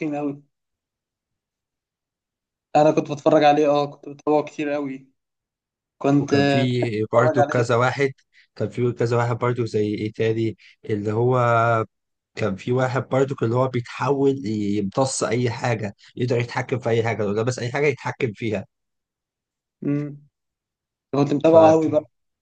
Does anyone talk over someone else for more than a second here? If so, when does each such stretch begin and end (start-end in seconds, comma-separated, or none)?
6.2-7.7